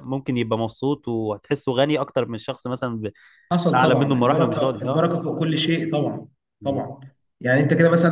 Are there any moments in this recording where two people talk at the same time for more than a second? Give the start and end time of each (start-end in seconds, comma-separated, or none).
3.7-5.1